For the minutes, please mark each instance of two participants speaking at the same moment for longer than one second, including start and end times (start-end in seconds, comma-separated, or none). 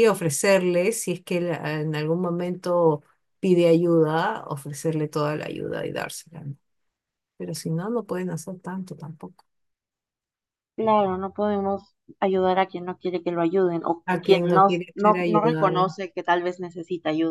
14.1-15.8